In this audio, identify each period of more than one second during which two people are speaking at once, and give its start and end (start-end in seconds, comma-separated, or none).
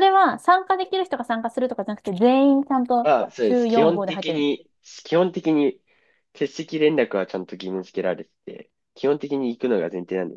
3.0-4.5